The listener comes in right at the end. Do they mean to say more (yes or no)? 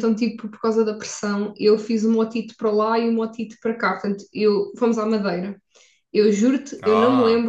no